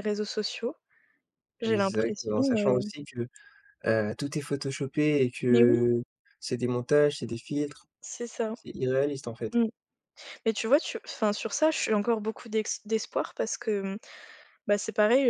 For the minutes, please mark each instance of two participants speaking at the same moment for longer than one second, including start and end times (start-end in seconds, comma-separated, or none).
1.6-2.9